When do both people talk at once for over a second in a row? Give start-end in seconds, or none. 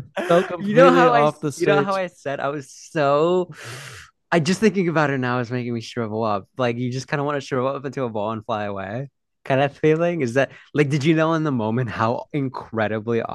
0.6-2.0